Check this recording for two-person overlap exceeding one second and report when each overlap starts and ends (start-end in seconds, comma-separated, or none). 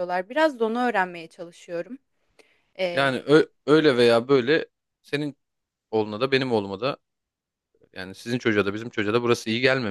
none